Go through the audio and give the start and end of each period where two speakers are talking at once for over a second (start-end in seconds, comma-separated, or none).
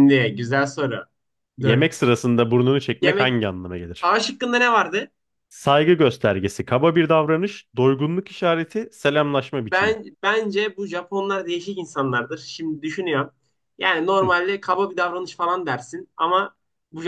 none